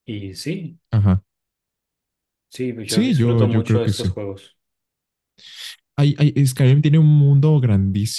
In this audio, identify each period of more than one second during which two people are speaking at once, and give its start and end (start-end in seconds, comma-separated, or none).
2.9-4.1